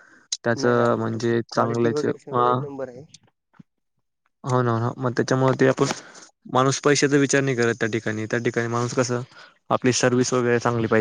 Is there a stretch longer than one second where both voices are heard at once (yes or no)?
yes